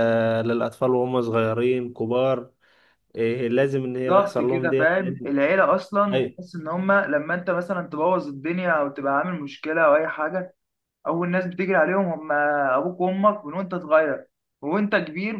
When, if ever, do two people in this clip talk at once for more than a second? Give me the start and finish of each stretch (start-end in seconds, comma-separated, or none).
4.1-5.3